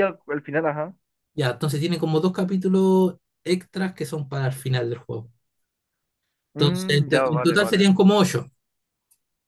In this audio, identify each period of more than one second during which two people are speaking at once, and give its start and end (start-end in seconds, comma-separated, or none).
6.6-7.9